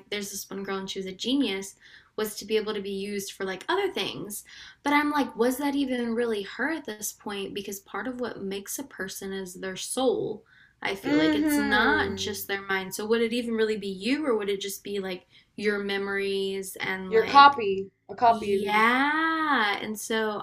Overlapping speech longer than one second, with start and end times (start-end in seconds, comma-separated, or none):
11.0-12.4